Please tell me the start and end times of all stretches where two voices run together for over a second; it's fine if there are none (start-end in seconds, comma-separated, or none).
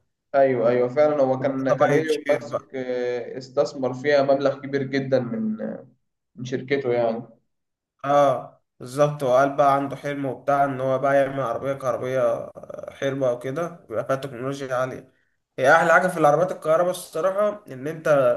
1.4-2.7